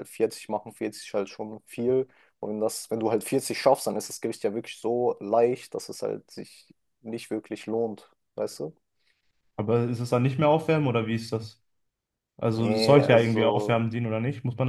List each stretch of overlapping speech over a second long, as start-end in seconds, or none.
12.6-13.9